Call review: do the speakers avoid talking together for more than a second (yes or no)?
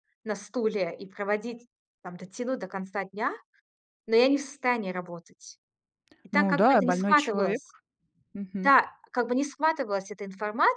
no